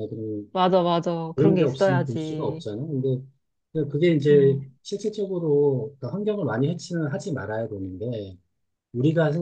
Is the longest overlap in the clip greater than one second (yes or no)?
yes